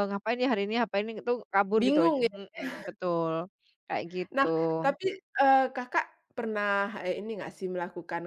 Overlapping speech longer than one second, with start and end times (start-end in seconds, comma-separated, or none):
none